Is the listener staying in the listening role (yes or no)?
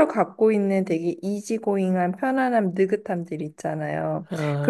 yes